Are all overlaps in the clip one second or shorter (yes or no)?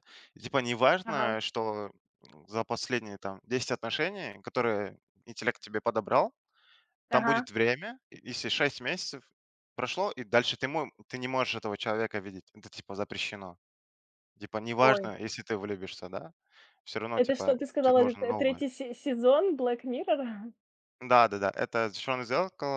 no